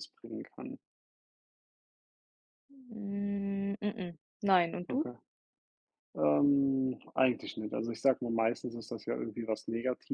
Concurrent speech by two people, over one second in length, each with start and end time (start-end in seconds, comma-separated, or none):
none